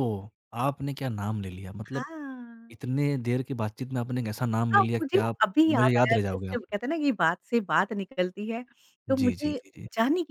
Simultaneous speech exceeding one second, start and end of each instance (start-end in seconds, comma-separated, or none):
4.7-6.6